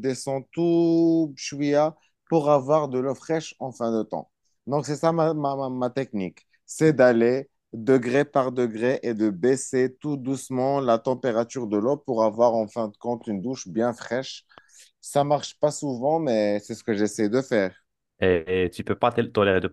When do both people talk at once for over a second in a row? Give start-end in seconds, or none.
none